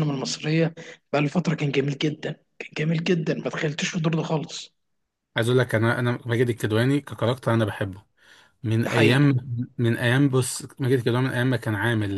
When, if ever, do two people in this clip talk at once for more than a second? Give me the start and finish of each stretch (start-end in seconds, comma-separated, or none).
none